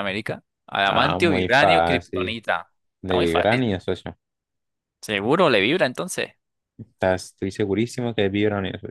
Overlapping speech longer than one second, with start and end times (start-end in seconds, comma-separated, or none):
0.8-2.4